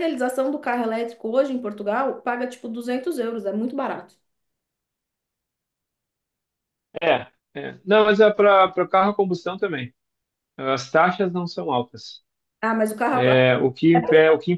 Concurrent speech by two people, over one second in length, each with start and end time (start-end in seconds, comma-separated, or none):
none